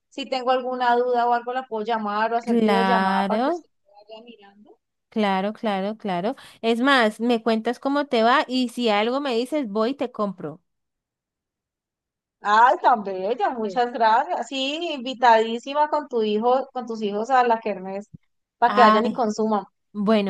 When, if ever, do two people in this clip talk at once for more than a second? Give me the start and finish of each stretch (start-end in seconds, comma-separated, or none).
2.4-3.6